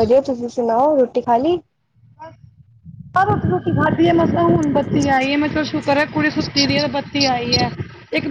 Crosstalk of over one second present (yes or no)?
no